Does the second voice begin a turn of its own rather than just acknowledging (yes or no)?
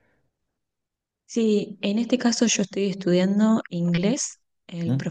no